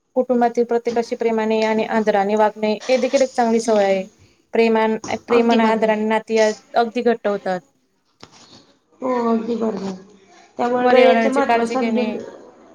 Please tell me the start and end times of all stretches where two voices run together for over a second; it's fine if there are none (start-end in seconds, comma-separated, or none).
10.8-12.1